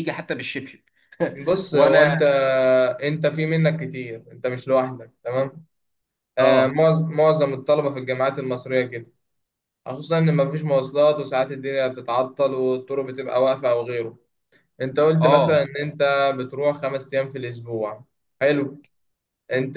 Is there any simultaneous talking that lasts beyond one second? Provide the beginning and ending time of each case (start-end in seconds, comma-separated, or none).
none